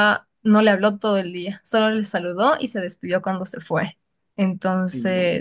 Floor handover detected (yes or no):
no